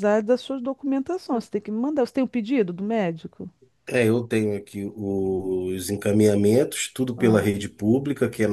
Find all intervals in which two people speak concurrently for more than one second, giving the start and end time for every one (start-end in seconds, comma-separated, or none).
none